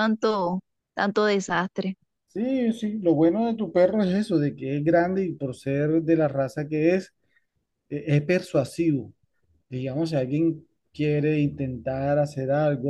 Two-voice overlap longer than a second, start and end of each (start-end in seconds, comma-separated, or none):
none